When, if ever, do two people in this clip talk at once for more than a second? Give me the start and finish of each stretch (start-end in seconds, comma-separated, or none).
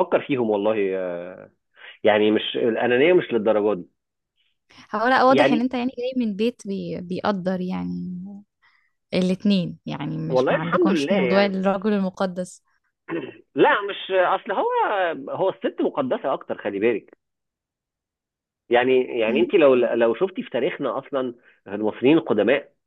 10.3-11.6